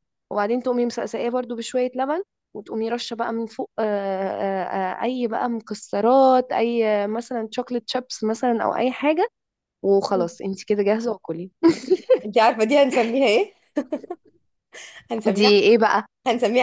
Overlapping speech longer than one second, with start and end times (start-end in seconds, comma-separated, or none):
none